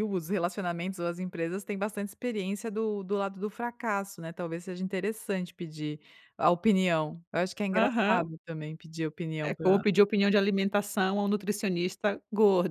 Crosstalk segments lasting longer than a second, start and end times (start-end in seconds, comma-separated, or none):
none